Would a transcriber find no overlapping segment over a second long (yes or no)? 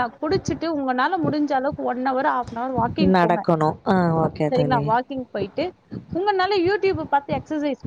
yes